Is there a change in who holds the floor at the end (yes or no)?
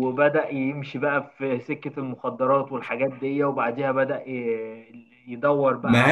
no